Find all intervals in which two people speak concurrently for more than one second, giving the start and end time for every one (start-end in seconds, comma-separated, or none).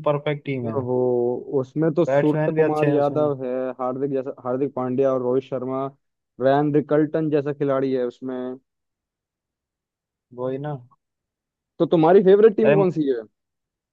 2.1-3.3